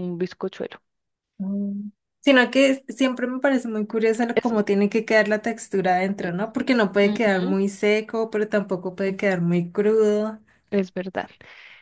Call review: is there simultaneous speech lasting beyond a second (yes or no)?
no